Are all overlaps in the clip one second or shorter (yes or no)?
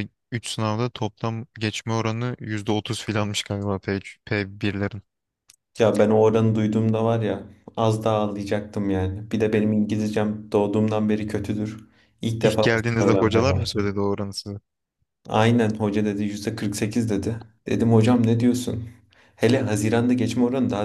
no